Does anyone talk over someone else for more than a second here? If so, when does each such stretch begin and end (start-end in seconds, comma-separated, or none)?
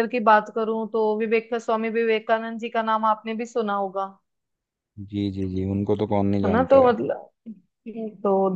none